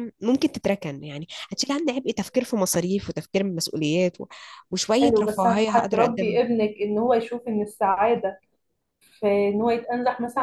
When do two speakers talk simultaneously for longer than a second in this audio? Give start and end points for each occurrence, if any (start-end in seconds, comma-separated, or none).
5.0-6.4